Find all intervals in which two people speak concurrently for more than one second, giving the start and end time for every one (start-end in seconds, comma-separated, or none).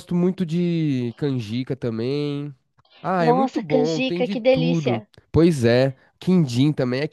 3.2-5.1